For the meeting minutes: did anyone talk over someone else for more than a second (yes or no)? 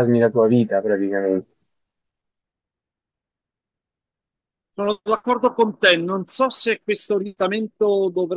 no